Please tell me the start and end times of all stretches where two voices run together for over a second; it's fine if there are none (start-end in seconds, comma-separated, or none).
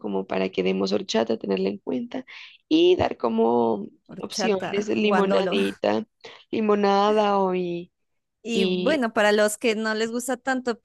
4.1-5.5